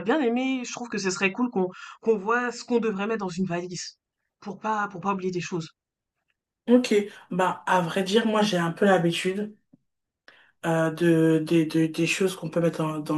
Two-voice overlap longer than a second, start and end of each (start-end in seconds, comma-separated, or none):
none